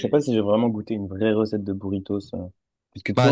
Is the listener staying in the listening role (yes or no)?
no